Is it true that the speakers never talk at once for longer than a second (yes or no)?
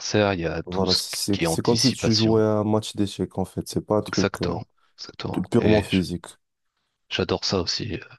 no